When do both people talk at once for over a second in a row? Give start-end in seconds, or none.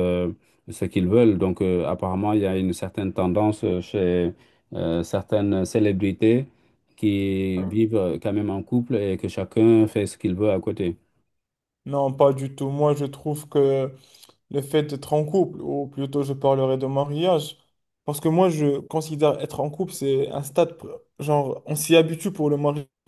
none